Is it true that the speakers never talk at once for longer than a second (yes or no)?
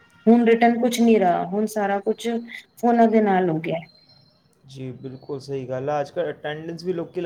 yes